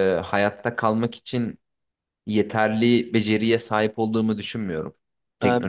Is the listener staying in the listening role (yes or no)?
no